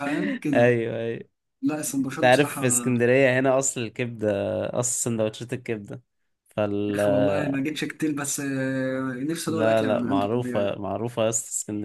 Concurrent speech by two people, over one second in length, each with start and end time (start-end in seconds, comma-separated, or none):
9.5-10.8